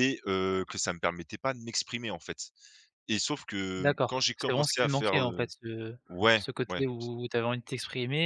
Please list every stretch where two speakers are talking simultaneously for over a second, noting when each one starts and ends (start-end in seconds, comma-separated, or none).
3.8-5.5